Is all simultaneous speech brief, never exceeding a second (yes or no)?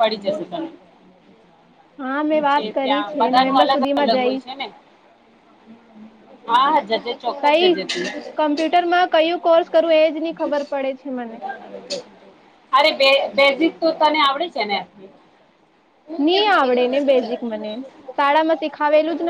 no